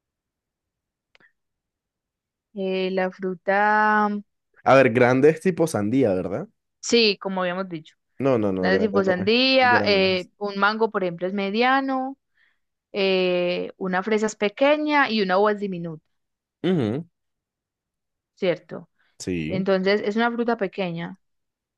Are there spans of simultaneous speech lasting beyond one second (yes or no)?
yes